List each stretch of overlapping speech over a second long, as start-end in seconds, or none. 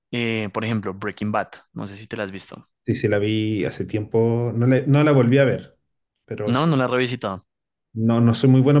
none